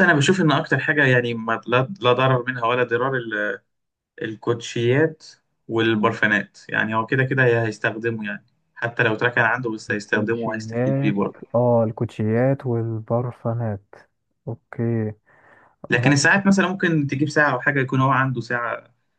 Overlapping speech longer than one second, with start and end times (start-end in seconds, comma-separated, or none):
9.9-11.2